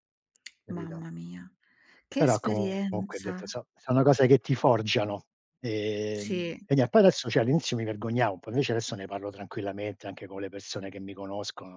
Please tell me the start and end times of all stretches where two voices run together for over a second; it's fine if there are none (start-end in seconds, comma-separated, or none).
2.2-3.4